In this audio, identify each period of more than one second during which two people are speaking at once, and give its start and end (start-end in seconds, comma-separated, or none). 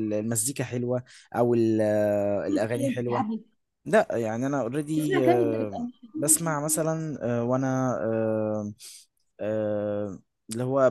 none